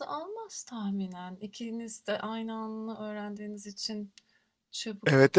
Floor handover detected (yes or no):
yes